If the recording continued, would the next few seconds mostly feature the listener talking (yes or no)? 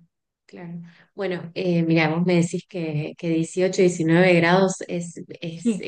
no